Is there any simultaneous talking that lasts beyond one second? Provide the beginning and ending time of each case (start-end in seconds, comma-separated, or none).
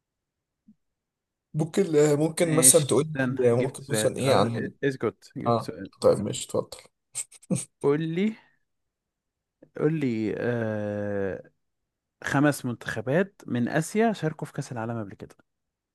2.4-4.5